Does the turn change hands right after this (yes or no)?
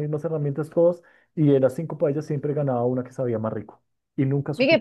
yes